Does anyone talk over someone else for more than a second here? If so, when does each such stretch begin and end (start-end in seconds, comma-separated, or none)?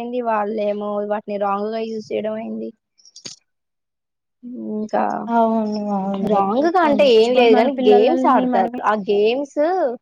6.3-8.8